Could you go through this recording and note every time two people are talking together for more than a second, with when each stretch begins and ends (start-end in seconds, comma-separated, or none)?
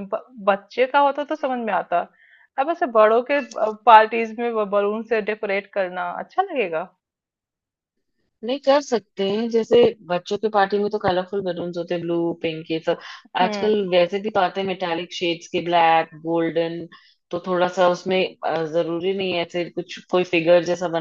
none